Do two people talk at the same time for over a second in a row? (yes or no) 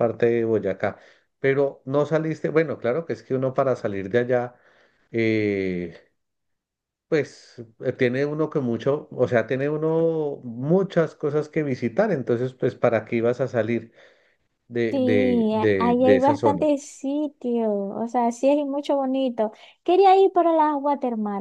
yes